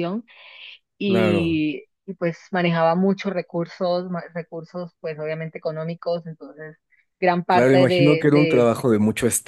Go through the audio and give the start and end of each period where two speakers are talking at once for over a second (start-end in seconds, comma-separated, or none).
7.5-8.7